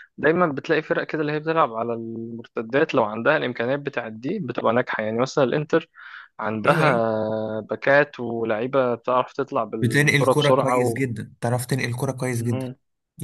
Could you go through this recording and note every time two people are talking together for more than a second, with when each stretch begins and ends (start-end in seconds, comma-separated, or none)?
9.8-11.0